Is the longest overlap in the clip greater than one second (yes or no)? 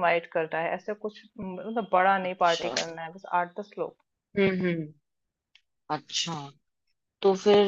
no